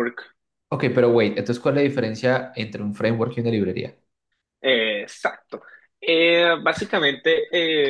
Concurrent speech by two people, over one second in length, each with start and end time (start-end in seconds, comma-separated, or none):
none